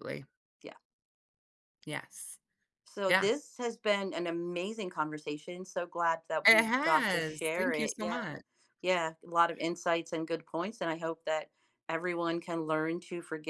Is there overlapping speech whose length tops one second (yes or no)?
yes